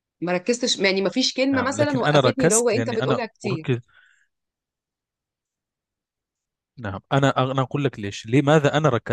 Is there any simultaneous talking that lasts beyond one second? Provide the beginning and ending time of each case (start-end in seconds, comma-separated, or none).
1.5-3.6